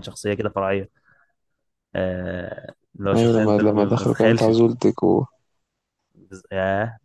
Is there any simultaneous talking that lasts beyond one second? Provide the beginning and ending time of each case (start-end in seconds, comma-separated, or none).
3.1-4.7